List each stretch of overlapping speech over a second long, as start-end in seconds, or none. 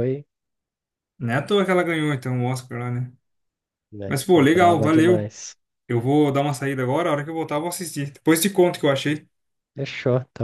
4.0-5.3